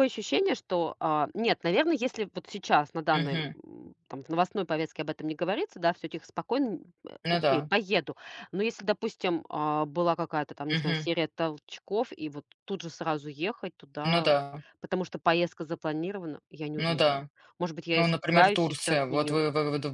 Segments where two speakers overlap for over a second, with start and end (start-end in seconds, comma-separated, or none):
17.9-19.4